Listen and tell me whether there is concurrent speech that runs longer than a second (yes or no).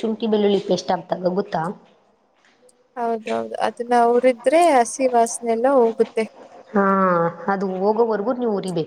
no